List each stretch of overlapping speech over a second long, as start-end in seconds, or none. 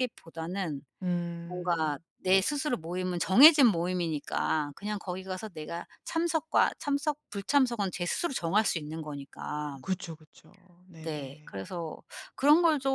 none